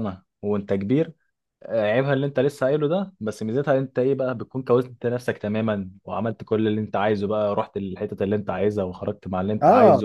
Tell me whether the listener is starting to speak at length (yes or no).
yes